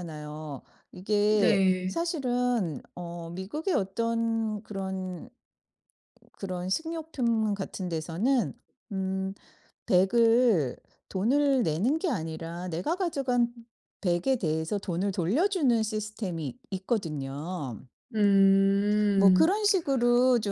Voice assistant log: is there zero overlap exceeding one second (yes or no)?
yes